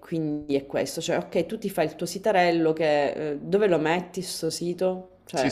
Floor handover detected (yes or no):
yes